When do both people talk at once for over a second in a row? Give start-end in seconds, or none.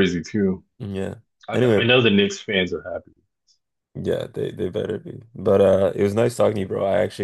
none